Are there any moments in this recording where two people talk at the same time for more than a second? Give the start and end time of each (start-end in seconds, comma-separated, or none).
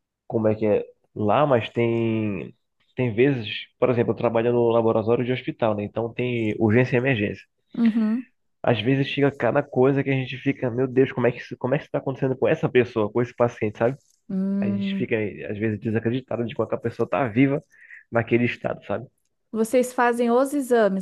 none